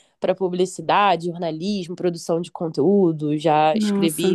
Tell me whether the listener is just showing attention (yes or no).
yes